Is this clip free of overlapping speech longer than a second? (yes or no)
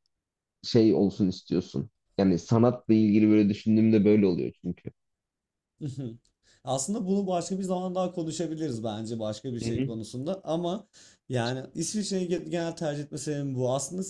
yes